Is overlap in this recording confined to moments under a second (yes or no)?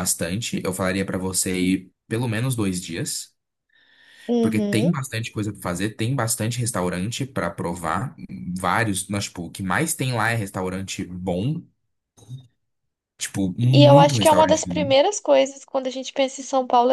no